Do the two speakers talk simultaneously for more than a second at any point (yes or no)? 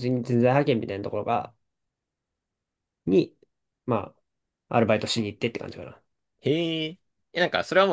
no